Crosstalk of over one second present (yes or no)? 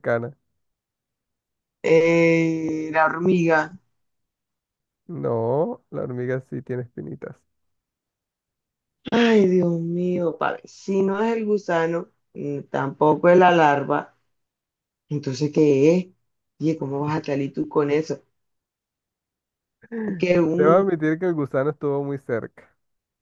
no